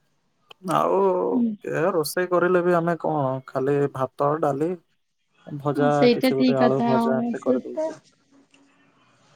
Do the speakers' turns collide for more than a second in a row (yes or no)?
yes